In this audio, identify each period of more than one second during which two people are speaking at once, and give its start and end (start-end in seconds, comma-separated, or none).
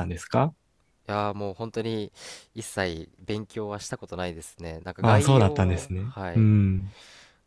5.0-6.5